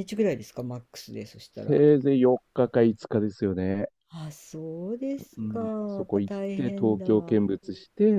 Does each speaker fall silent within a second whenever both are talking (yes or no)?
no